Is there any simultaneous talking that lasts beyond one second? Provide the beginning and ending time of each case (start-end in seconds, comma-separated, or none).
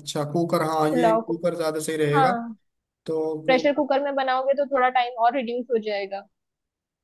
none